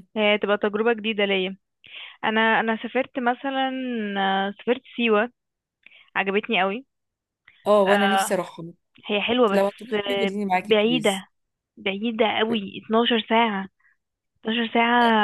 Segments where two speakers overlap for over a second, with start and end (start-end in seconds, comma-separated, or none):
9.5-11.2